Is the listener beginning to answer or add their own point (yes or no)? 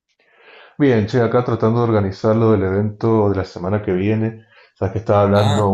no